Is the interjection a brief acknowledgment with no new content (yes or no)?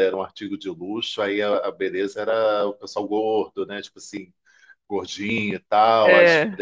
yes